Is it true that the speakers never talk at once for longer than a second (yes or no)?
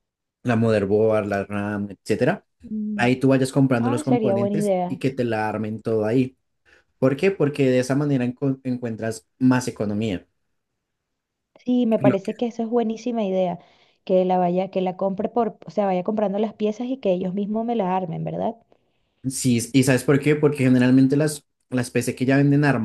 no